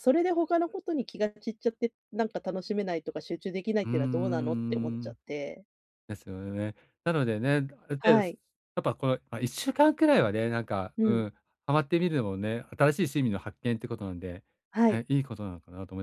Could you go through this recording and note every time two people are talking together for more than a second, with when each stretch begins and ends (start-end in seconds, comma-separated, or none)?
3.8-5.2